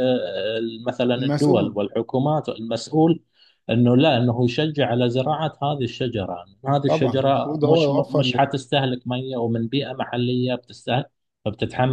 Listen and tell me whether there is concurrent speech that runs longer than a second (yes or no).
yes